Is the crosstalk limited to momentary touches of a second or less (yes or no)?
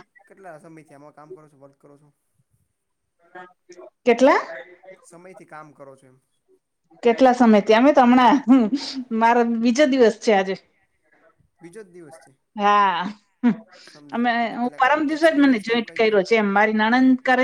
no